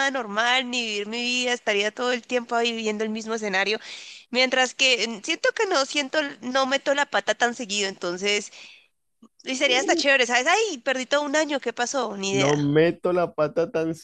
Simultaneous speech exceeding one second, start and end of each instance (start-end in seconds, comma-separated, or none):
none